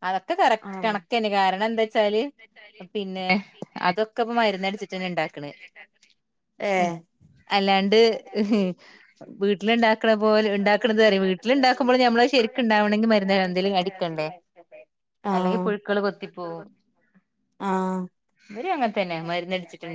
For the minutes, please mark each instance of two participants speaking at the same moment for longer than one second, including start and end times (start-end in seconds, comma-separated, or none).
10.0-14.3